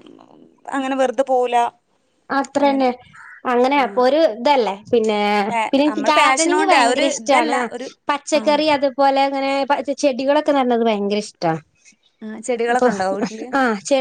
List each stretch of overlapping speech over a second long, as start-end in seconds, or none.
5.7-7.6